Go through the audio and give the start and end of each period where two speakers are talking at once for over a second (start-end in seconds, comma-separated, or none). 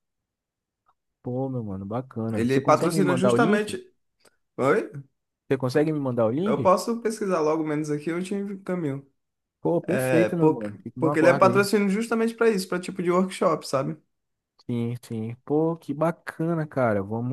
2.3-3.8, 9.8-11.6